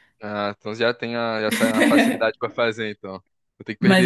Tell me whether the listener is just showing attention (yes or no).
no